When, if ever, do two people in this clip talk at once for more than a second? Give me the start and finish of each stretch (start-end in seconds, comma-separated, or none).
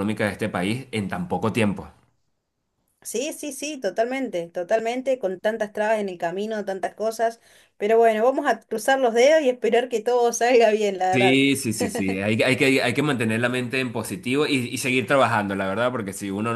none